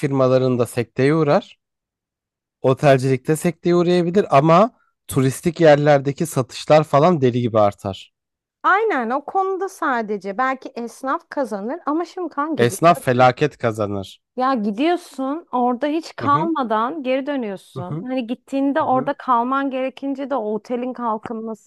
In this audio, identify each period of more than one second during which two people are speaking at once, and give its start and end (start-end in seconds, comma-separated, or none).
none